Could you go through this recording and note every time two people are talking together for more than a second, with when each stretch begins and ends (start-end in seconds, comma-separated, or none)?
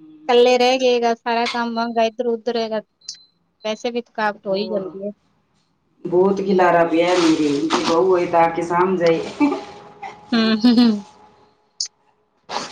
none